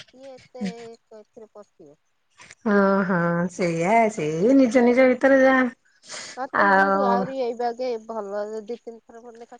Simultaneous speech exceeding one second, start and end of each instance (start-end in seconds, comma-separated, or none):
none